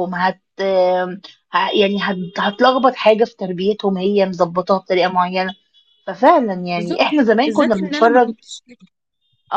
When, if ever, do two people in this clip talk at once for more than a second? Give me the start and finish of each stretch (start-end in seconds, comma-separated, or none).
6.8-8.3